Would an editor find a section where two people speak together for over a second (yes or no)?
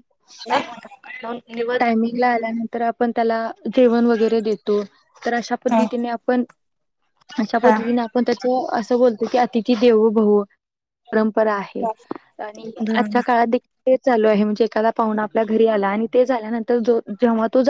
no